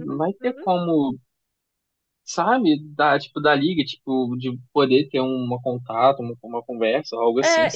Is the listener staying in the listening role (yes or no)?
no